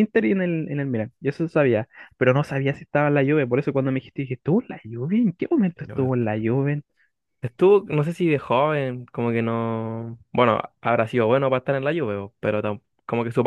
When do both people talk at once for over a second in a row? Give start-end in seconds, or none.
none